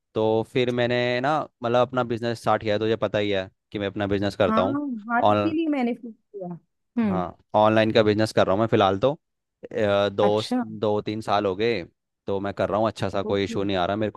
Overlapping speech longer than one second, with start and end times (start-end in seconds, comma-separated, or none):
none